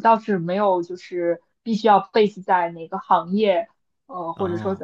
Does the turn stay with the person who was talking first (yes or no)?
yes